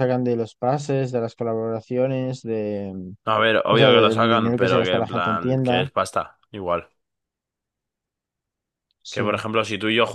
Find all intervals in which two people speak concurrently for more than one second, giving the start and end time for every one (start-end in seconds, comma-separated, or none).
3.7-5.9